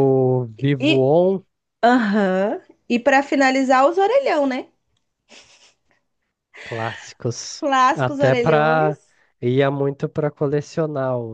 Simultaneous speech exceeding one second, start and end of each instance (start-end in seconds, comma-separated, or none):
7.6-9.0